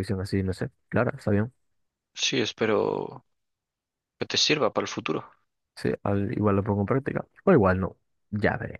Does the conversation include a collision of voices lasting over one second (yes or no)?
no